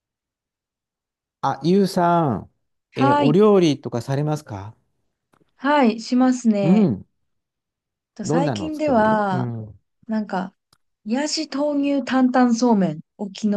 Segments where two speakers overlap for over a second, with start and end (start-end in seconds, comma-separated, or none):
8.2-9.5